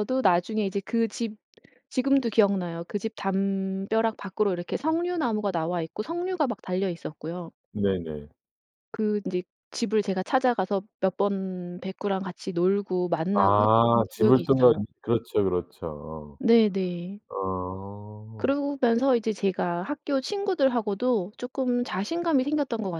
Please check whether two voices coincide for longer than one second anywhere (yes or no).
yes